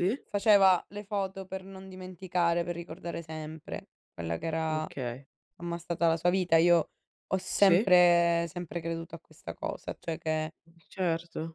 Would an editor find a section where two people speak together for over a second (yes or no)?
no